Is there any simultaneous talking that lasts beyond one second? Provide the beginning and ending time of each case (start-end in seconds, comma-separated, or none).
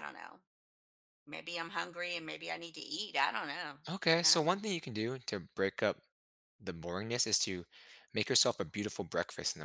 none